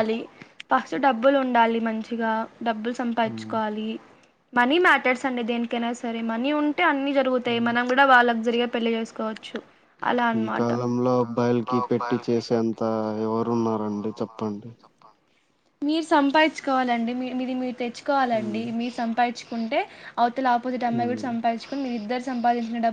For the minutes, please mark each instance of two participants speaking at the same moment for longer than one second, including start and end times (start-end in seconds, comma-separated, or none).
none